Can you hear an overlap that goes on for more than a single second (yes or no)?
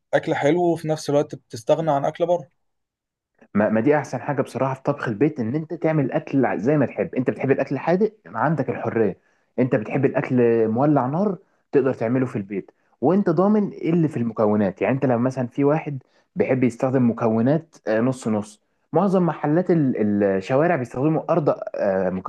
no